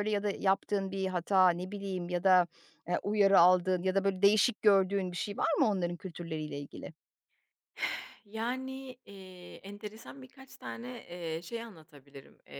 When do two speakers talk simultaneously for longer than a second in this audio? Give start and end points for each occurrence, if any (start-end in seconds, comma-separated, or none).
none